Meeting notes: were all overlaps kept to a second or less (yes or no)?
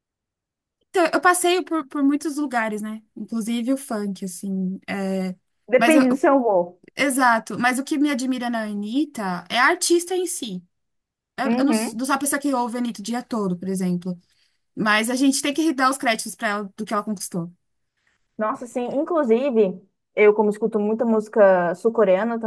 yes